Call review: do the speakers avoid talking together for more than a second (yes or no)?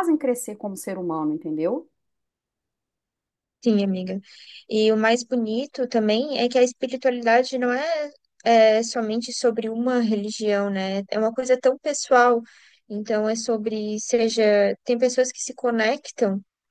yes